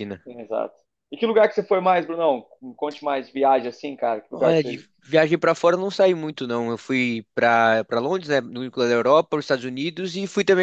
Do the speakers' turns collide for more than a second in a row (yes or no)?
no